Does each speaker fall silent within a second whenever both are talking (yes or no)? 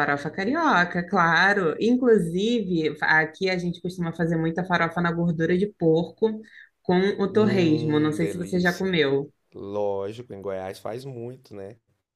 no